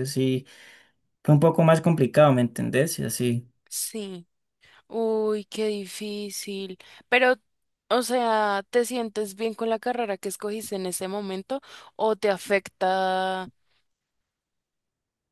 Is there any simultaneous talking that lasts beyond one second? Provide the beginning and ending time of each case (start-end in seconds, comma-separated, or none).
none